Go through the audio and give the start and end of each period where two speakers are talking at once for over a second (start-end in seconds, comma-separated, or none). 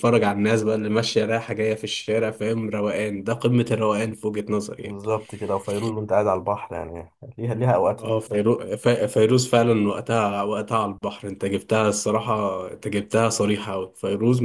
none